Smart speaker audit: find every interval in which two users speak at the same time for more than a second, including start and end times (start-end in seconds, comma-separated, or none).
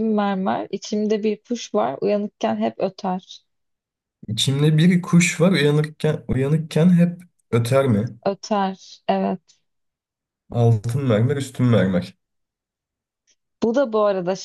none